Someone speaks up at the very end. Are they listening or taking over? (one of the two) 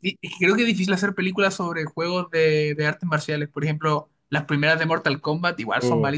taking over